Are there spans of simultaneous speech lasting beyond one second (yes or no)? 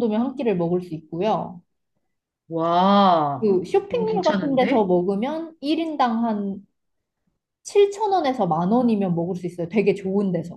yes